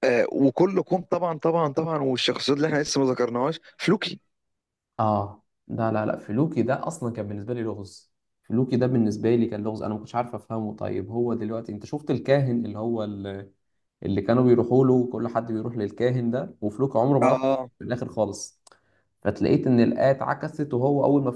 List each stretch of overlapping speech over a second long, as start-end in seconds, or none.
none